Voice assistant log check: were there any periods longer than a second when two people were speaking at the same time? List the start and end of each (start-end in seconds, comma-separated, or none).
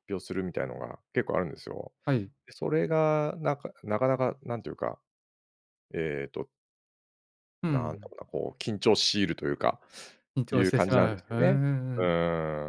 10.5-12.1